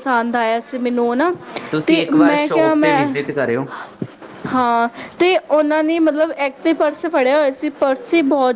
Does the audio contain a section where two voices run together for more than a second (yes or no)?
yes